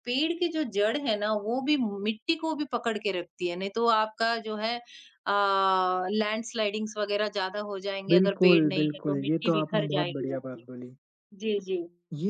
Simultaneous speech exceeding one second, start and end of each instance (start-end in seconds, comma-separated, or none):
8.1-10.6